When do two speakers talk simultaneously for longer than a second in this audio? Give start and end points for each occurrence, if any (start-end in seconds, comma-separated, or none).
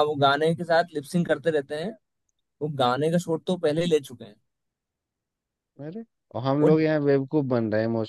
none